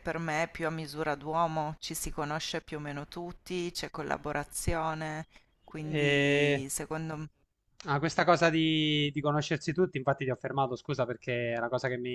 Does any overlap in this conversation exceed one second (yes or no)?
no